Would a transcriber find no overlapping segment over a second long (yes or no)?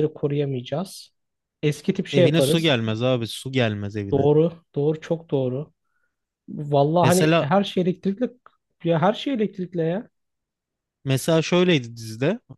yes